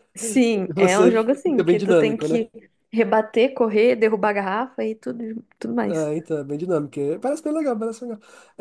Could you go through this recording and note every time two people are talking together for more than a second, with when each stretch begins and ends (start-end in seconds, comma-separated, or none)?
0.7-2.4